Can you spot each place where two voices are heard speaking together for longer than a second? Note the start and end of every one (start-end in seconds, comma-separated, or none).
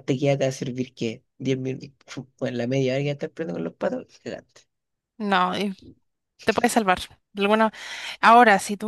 none